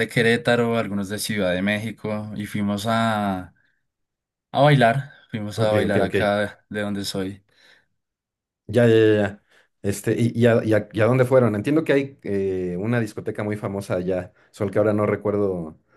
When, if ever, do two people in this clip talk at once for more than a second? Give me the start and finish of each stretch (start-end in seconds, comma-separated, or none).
none